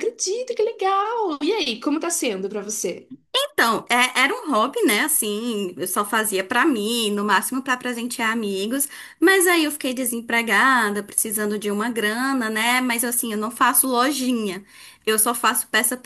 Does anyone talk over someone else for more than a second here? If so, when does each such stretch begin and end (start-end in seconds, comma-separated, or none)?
none